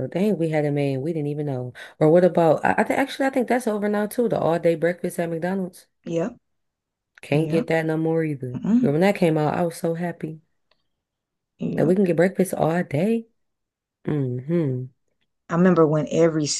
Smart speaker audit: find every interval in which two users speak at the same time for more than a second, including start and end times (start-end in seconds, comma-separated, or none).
none